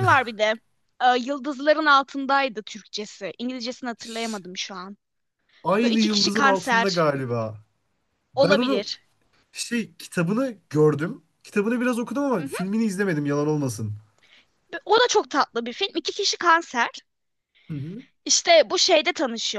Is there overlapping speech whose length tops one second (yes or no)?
yes